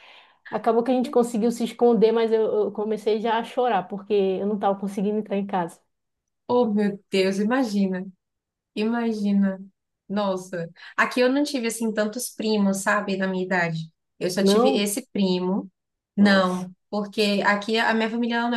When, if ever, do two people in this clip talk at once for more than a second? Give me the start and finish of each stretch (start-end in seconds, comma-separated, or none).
none